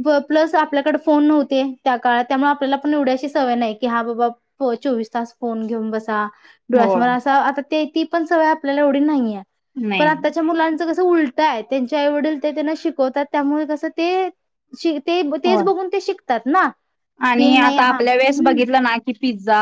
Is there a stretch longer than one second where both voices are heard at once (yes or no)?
yes